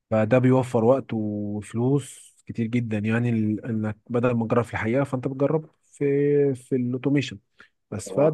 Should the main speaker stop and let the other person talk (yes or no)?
no